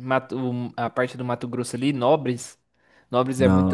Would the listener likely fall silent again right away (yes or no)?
yes